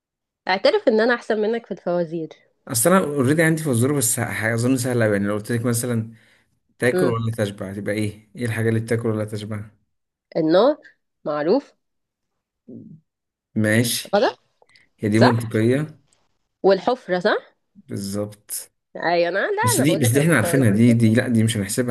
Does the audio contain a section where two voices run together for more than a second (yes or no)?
yes